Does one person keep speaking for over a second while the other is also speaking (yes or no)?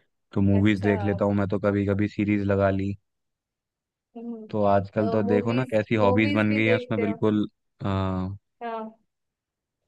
yes